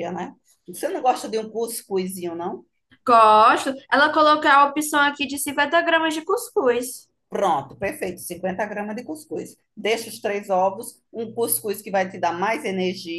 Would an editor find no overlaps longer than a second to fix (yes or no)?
yes